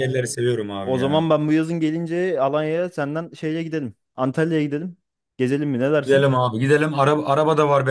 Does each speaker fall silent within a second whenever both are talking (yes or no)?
yes